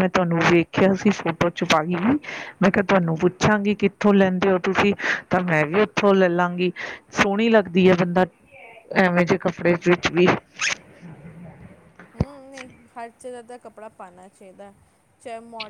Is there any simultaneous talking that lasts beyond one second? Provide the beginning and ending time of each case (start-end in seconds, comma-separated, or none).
none